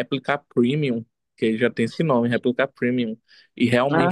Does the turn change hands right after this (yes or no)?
no